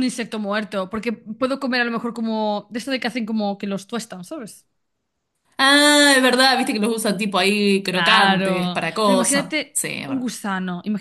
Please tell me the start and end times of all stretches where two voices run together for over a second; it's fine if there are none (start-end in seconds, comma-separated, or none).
7.9-10.3